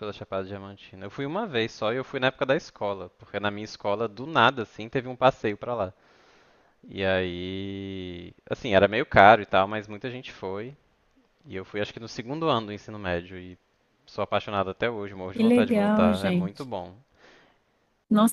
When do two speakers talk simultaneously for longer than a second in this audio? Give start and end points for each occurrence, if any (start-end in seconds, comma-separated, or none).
15.3-16.6